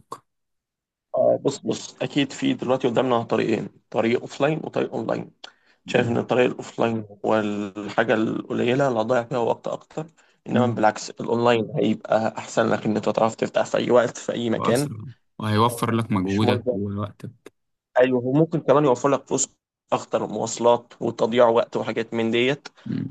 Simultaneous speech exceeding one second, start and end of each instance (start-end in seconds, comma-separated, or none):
none